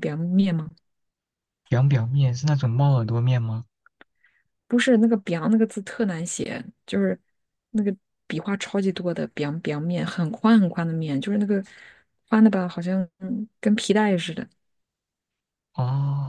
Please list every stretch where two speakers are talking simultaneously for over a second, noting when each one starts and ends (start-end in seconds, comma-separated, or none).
none